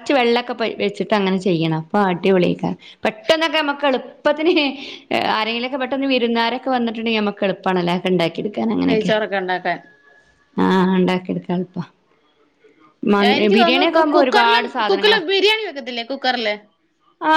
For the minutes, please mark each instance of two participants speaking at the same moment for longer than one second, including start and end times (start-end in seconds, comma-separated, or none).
13.6-15.2